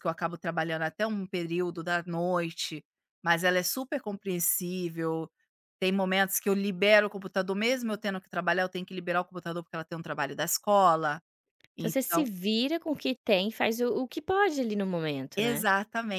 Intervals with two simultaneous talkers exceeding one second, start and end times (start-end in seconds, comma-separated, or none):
none